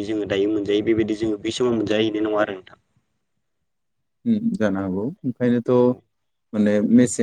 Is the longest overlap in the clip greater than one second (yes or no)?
no